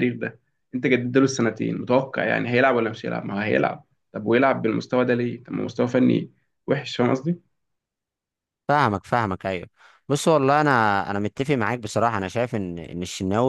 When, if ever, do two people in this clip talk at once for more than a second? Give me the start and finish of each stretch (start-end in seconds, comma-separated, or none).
none